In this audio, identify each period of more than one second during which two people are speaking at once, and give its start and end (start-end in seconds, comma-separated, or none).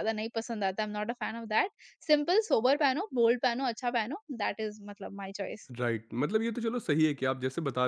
none